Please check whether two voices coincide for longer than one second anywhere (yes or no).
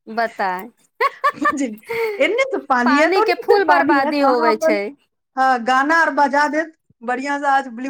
yes